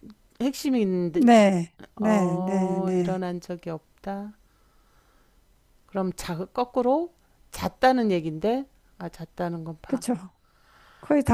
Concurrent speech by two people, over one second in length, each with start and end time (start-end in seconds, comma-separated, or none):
2.0-3.2